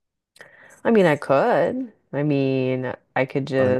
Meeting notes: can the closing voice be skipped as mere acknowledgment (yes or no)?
yes